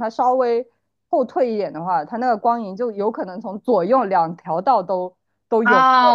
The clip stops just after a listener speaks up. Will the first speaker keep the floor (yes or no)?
no